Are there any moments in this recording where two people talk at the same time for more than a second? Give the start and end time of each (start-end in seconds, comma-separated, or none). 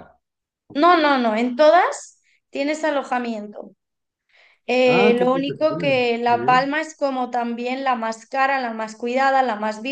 4.8-6.7